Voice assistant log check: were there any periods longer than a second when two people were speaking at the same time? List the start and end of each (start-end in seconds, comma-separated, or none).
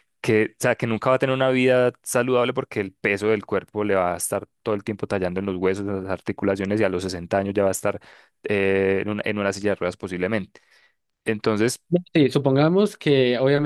none